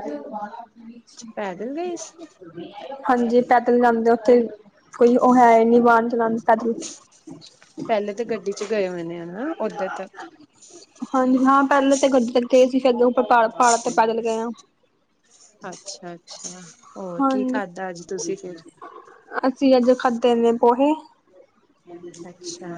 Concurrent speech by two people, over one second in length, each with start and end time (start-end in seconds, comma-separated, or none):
none